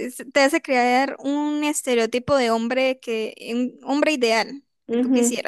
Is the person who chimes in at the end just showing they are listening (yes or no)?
no